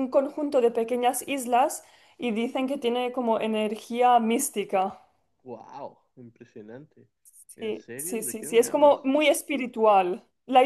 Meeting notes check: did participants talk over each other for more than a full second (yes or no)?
yes